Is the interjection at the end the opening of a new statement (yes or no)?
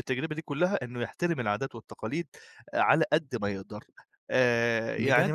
yes